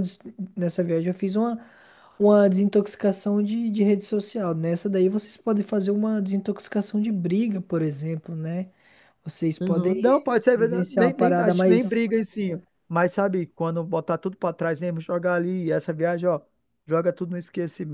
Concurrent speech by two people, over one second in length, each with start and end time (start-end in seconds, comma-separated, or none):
9.6-12.0